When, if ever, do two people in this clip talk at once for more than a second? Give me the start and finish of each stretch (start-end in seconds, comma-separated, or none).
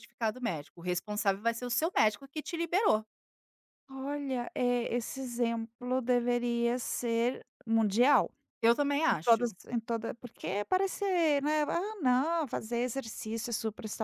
none